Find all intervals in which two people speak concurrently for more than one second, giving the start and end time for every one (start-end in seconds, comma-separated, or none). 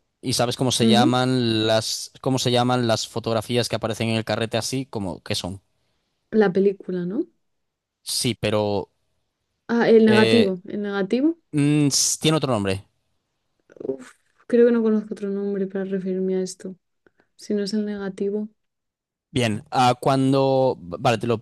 none